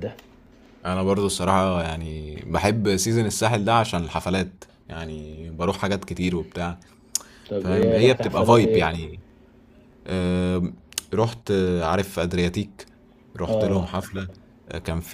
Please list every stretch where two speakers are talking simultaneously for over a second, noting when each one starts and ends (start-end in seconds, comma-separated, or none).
7.6-8.9